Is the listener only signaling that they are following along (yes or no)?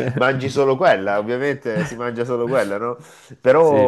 yes